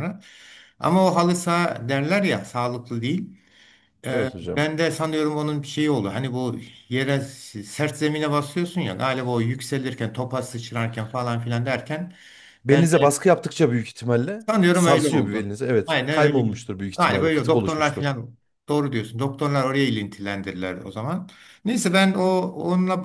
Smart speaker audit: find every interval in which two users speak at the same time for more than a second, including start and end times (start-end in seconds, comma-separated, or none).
14.4-18.1